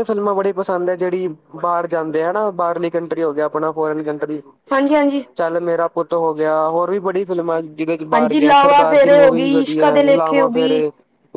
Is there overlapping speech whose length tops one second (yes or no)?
yes